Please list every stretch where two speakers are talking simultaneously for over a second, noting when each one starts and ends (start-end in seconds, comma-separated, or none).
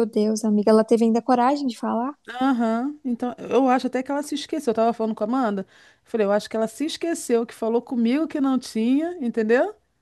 none